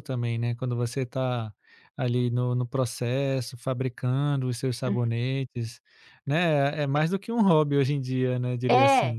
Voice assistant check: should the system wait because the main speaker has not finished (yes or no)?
no